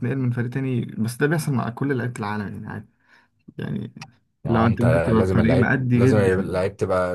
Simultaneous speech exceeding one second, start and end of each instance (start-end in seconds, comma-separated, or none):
4.4-6.6